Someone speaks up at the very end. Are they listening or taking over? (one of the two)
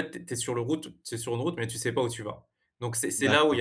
listening